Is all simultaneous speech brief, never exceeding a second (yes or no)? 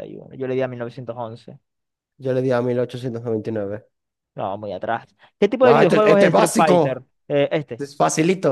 no